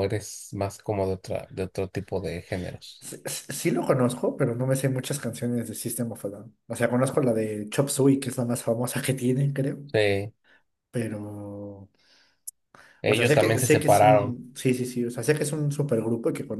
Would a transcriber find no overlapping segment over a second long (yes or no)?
no